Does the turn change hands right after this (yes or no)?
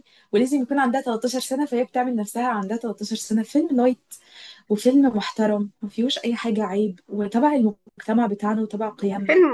yes